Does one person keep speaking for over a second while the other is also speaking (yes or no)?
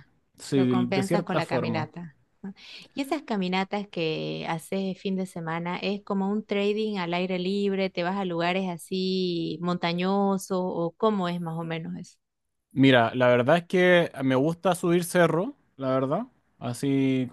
yes